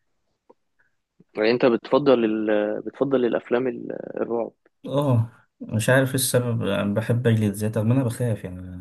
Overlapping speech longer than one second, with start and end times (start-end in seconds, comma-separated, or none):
none